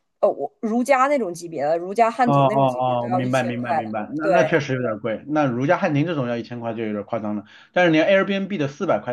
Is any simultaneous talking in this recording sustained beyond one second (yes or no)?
yes